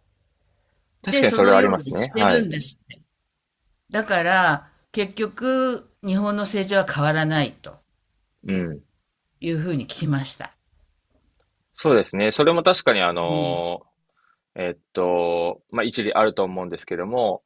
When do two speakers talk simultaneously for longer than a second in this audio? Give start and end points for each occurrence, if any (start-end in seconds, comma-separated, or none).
1.1-2.5